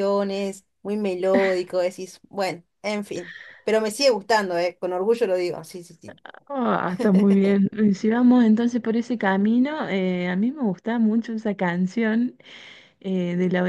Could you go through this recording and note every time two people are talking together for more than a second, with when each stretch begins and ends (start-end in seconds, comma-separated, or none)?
none